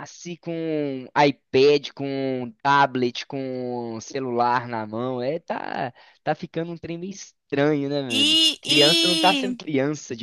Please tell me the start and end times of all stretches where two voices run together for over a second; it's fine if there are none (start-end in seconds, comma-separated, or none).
8.1-9.6